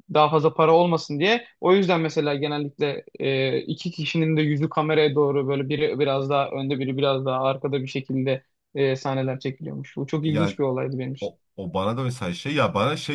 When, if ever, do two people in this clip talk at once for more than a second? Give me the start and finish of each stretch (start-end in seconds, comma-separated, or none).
none